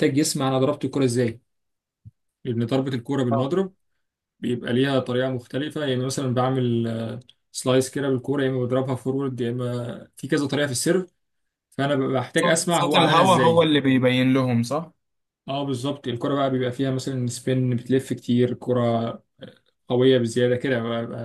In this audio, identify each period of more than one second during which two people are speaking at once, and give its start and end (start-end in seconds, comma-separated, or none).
12.3-13.7